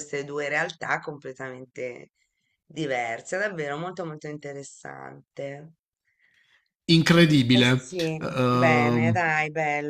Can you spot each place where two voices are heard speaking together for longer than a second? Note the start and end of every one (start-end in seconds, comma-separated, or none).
7.5-9.2